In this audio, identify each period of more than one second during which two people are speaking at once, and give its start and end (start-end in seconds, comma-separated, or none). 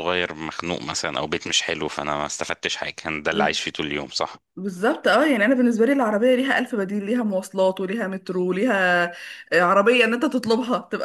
none